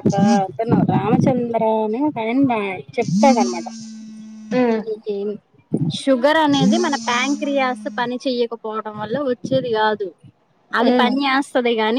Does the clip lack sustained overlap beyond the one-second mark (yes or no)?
no